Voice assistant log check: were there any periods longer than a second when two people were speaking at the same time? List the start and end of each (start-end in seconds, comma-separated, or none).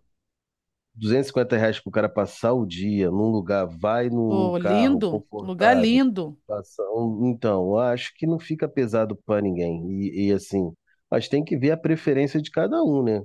4.3-6.0